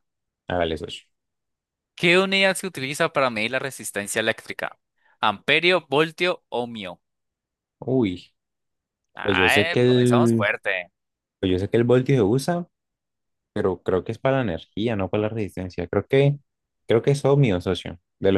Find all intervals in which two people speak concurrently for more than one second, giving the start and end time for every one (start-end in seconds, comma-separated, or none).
9.2-10.5